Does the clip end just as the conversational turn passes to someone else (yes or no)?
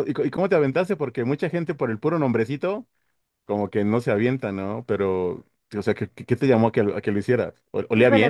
yes